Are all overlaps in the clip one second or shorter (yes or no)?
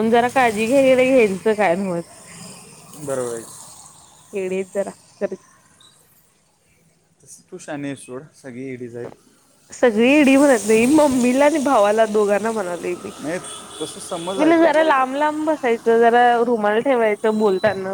yes